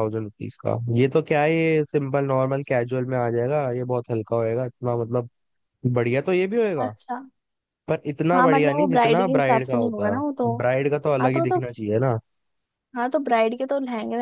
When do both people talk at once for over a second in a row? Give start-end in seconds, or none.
8.3-10.2